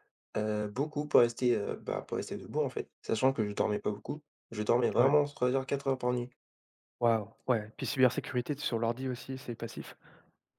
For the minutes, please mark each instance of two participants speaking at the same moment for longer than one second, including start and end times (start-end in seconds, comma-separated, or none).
none